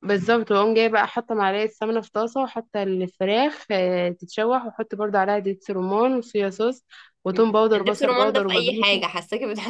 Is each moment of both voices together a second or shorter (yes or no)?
no